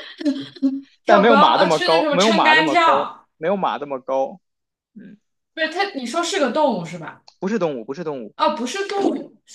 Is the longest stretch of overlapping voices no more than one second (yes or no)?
no